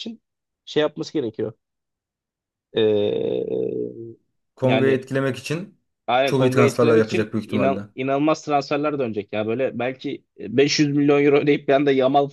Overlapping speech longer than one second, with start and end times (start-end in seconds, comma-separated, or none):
6.2-7.9